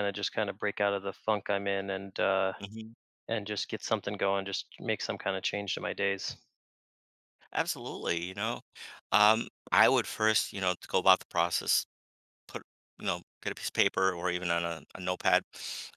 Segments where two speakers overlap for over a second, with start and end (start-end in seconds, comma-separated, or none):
none